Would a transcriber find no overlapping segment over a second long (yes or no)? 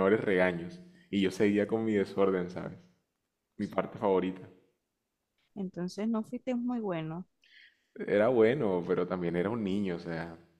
yes